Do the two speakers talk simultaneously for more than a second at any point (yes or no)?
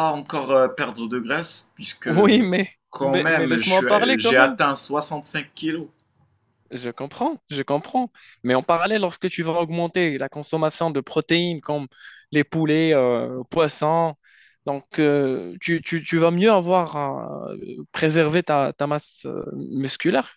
yes